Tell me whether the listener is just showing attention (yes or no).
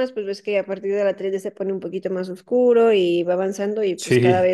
yes